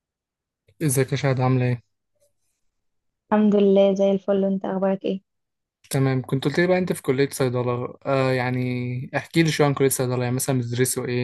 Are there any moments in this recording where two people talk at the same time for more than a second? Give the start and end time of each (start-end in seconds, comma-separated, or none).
none